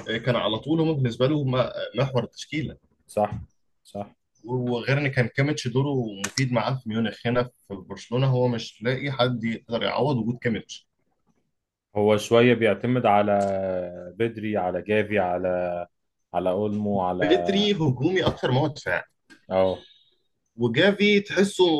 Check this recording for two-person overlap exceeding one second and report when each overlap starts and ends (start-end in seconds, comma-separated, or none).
none